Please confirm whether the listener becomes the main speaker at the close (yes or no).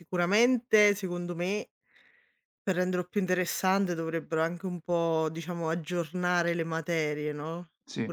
no